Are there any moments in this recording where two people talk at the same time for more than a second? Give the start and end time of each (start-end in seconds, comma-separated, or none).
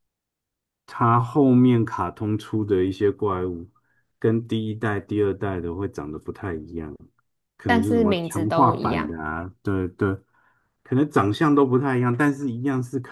7.7-9.2